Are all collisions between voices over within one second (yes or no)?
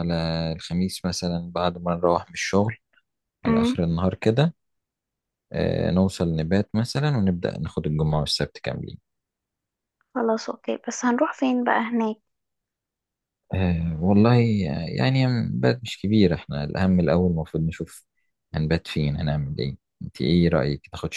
yes